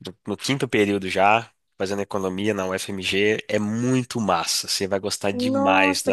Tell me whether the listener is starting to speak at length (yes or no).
yes